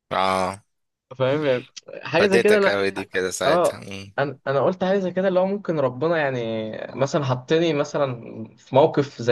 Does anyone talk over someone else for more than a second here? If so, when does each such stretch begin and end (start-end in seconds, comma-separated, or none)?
none